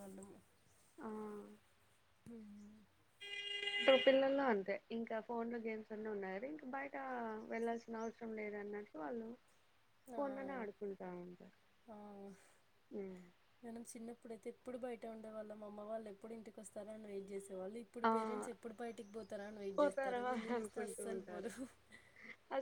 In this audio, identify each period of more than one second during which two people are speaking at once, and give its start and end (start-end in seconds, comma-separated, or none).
19.8-21.5